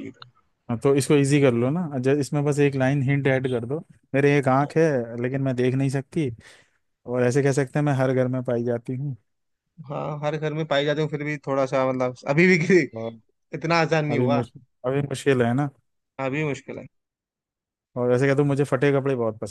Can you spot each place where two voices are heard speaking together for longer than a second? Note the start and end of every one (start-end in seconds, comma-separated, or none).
none